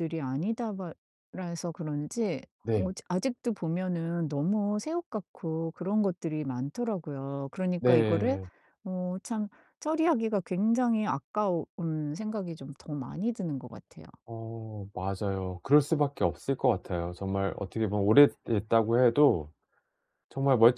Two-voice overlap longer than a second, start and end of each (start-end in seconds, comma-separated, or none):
none